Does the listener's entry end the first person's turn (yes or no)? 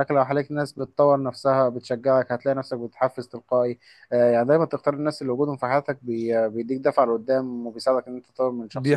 yes